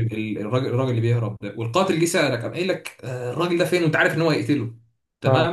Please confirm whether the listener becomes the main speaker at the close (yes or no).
no